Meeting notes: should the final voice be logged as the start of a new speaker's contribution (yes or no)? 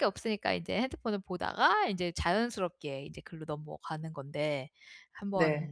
no